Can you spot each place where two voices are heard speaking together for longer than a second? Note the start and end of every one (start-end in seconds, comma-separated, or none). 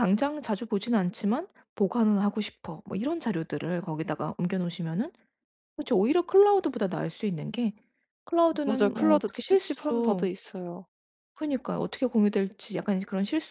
8.6-10.3